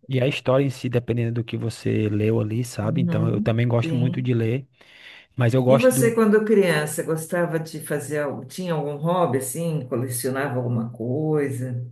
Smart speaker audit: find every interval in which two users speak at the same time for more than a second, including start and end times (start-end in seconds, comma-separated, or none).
2.8-4.3